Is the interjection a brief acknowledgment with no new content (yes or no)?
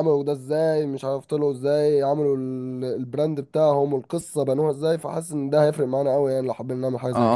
no